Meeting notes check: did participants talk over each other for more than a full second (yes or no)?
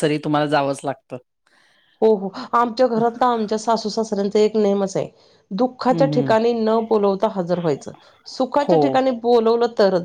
no